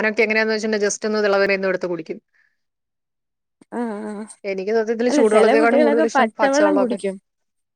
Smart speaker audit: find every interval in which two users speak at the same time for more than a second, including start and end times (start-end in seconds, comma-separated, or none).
5.1-7.0